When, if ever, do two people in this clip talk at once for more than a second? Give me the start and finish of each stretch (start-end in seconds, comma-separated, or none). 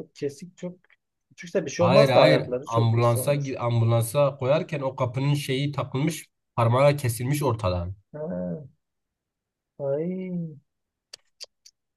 1.8-3.5